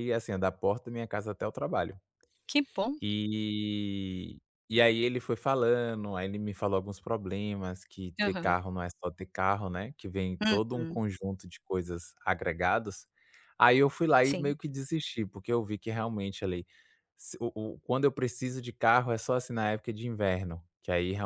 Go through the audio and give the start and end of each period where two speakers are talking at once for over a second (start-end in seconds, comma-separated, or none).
none